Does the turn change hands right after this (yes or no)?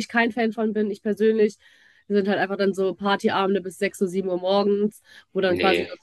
no